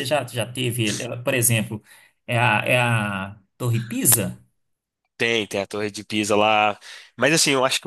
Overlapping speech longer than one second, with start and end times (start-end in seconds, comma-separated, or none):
none